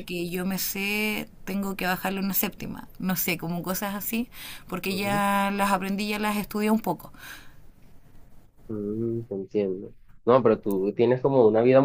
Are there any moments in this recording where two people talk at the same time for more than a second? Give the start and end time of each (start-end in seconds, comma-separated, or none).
none